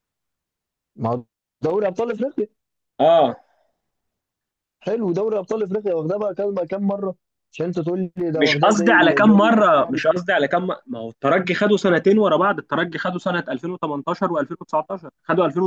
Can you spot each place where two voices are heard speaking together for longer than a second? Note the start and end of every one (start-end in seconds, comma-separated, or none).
8.3-10.0